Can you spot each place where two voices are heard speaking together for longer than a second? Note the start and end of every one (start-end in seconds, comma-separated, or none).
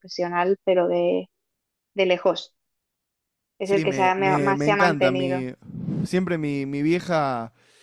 3.6-5.4